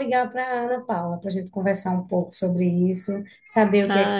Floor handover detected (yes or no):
no